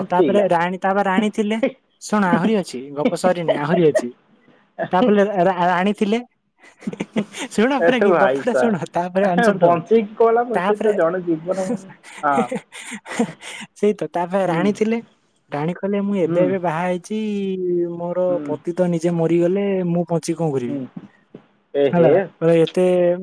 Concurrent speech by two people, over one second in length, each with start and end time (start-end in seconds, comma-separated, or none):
7.9-10.9